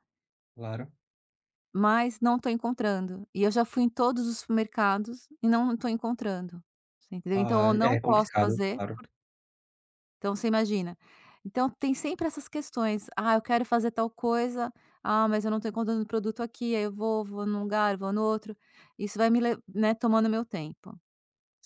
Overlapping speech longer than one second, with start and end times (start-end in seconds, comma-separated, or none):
7.3-8.8